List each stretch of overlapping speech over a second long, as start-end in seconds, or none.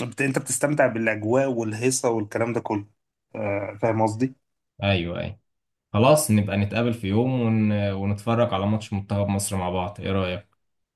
none